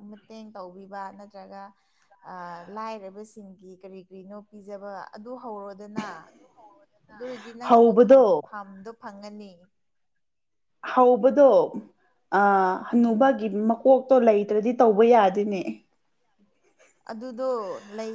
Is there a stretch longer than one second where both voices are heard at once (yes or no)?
no